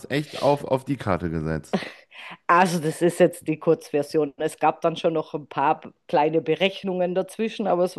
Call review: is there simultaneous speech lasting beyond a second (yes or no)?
no